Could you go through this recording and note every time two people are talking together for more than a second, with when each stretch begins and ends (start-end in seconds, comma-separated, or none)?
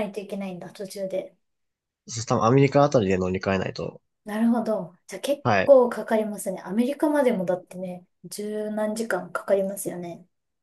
none